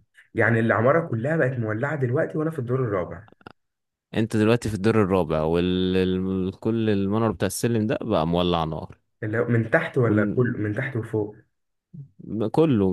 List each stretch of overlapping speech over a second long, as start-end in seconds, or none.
none